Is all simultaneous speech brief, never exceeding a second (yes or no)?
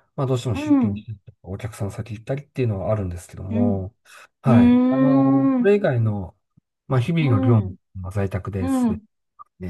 no